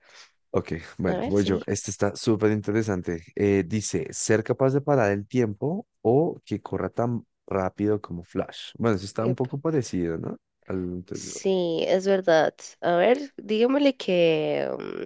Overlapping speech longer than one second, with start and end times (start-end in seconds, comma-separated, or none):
none